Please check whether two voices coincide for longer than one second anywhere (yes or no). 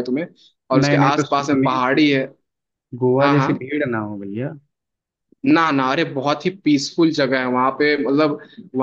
yes